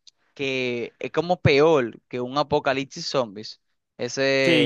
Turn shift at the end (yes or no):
yes